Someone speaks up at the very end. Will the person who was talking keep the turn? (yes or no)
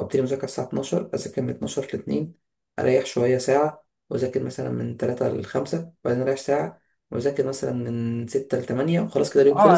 no